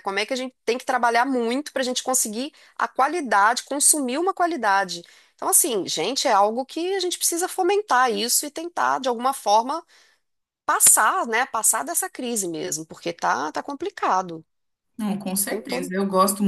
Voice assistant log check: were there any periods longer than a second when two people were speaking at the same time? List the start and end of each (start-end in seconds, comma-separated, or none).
none